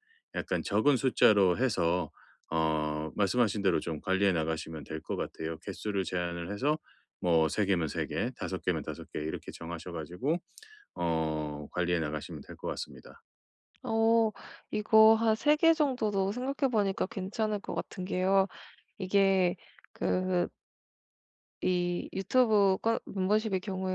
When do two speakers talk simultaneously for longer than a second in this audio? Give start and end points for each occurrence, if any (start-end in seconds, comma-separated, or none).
none